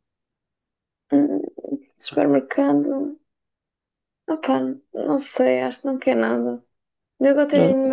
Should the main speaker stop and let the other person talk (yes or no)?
no